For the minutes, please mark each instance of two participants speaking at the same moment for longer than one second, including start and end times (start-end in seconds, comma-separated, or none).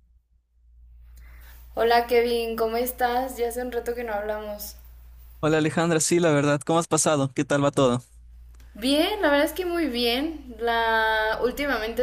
none